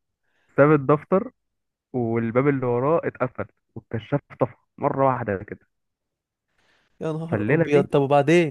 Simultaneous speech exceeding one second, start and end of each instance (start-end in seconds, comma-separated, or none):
none